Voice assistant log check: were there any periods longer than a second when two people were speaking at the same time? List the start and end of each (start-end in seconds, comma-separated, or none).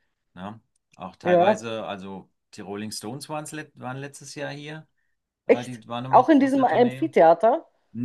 5.5-7.0